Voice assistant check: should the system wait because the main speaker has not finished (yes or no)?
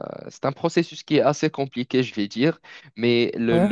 yes